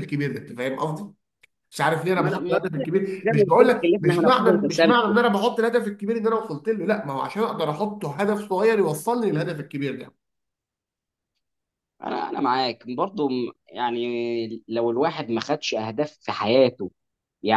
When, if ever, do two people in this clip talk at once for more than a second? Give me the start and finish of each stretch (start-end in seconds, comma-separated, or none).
3.2-5.2